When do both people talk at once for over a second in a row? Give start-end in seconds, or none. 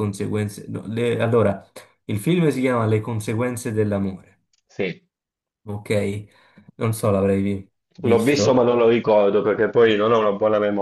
none